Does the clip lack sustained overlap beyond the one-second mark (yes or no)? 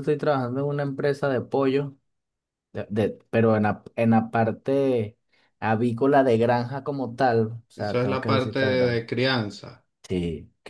no